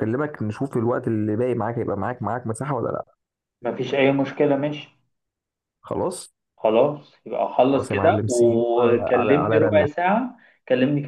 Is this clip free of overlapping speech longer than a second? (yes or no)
no